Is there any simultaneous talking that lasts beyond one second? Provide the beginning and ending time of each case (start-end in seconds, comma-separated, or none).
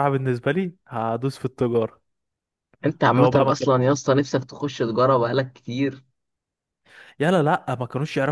none